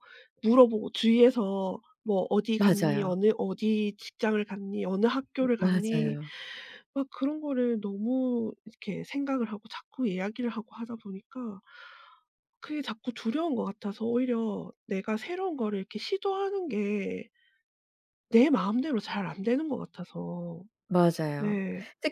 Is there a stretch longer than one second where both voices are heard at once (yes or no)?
no